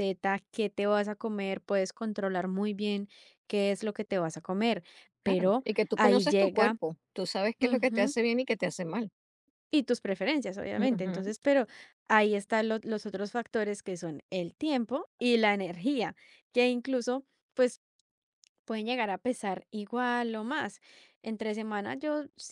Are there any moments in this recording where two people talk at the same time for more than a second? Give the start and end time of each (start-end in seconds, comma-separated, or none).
5.2-6.8